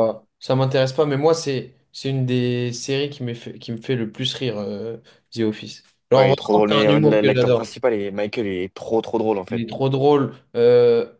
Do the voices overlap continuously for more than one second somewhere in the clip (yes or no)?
yes